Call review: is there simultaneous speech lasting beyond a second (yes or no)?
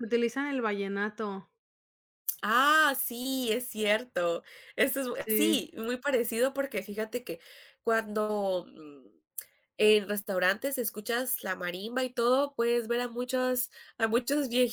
no